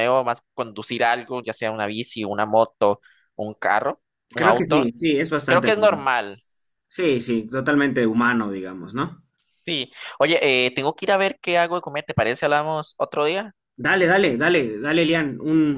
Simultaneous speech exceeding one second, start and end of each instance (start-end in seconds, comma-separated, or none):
4.4-6.1